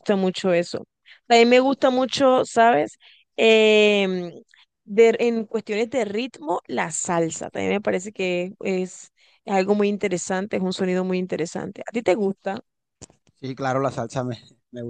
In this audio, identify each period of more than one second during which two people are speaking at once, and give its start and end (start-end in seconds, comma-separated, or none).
none